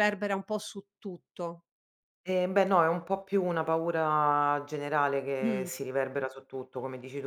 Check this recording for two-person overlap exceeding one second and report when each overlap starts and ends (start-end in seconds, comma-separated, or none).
none